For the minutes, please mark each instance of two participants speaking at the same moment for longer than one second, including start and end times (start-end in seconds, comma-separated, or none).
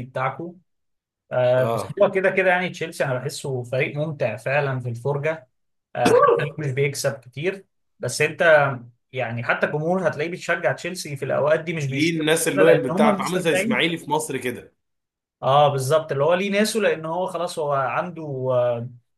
11.9-13.9